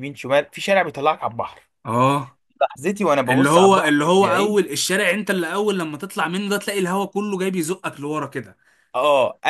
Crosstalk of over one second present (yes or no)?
yes